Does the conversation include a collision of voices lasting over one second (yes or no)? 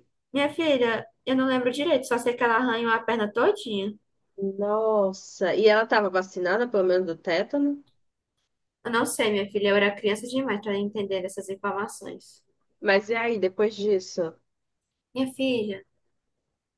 no